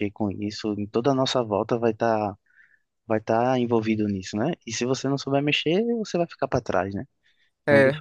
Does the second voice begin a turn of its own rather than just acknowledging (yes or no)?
no